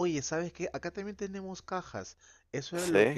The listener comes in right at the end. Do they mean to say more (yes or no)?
no